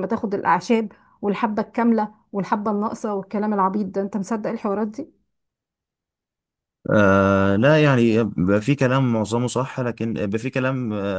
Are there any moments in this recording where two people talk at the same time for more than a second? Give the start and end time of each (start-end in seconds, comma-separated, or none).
none